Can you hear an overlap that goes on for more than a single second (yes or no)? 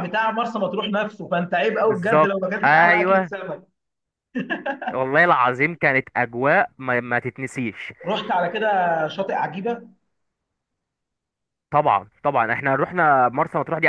yes